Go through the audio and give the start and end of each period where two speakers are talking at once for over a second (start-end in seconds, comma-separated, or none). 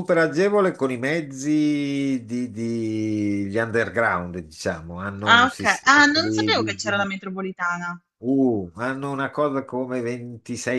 5.3-7.1